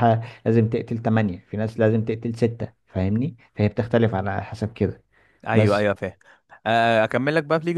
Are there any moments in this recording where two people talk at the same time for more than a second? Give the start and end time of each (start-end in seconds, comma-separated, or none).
none